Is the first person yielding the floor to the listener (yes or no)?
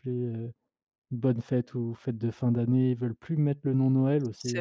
no